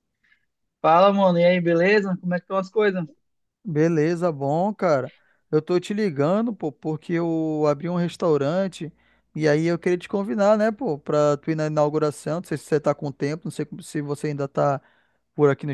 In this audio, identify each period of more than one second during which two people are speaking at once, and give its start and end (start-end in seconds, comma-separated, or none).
none